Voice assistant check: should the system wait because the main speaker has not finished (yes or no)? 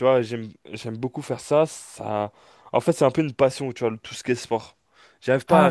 yes